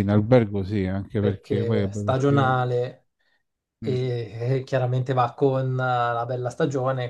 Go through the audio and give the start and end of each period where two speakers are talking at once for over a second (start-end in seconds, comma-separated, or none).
1.2-2.5